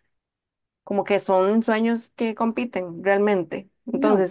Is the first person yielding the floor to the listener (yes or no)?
no